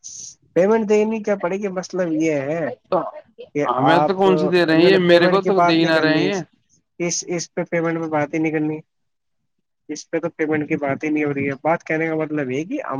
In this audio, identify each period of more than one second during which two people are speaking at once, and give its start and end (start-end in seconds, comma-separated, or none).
3.8-6.3